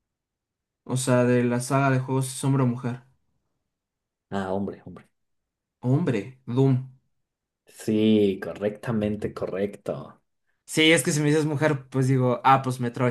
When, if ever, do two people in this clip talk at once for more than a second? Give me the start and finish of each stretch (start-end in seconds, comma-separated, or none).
none